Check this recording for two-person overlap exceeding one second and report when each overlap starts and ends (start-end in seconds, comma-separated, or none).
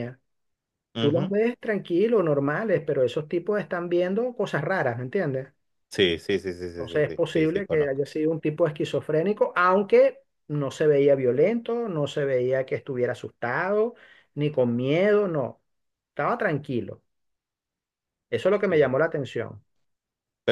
6.8-8.0